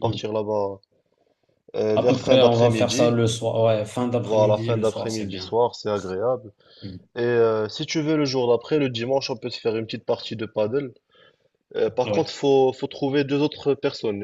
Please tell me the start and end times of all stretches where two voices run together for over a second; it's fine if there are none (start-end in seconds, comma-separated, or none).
1.9-3.2, 4.2-5.5